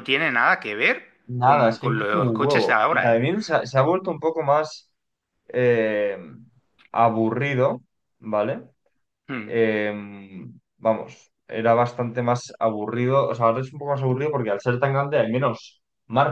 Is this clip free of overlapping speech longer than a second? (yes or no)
no